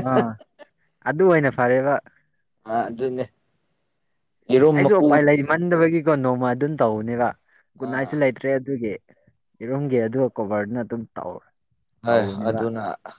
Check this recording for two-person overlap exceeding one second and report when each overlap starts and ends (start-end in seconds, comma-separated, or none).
none